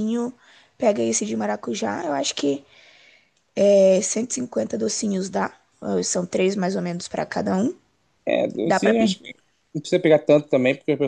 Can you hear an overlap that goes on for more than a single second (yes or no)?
no